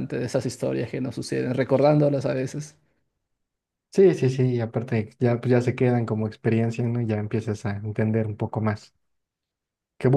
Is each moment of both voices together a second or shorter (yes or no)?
yes